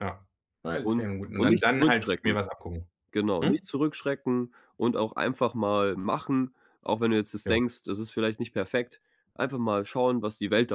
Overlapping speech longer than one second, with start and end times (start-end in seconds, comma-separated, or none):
0.8-2.3